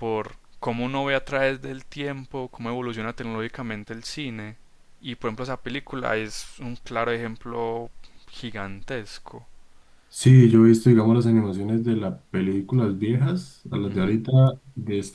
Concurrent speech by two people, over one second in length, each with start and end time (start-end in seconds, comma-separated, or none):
none